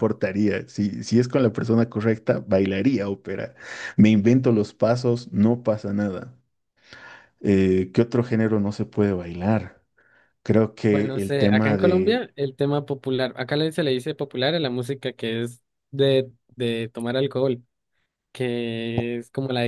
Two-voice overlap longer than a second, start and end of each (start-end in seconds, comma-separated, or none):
10.9-12.2